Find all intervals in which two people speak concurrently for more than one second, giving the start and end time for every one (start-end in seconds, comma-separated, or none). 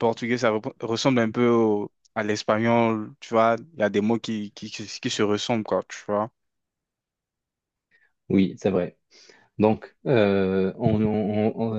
none